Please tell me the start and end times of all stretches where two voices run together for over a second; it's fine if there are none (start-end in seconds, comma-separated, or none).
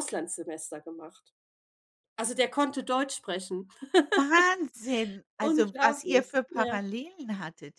5.4-6.8